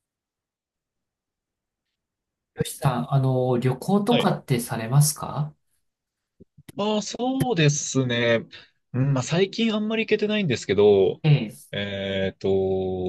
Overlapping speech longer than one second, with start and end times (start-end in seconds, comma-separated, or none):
none